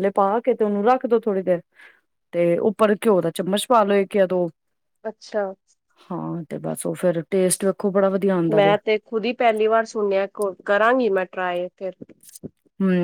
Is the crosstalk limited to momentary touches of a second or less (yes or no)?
yes